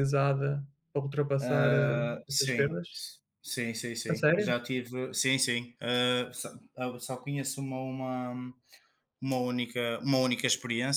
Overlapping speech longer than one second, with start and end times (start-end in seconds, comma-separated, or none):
1.4-2.9